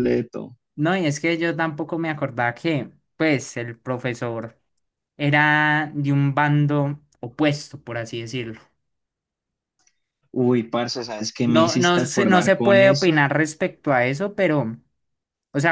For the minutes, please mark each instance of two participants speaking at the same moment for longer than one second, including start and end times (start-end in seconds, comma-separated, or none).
11.4-13.2